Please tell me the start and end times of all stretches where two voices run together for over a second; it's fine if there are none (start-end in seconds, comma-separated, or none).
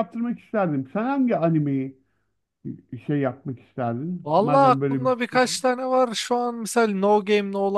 4.2-5.6